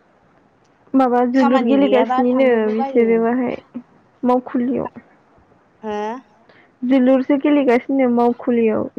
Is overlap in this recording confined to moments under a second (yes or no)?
no